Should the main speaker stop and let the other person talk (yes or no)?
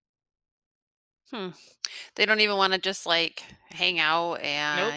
yes